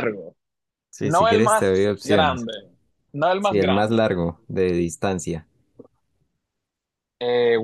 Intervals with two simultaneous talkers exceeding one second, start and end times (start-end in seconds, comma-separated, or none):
1.0-2.5